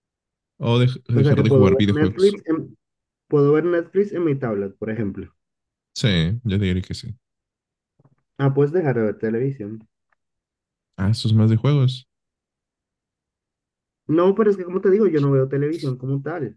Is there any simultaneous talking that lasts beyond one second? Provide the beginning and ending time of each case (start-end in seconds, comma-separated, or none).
1.1-2.4